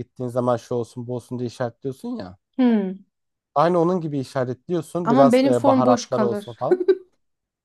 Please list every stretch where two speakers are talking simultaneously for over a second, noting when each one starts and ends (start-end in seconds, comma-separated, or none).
5.0-6.6